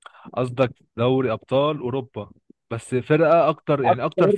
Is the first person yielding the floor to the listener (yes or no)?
yes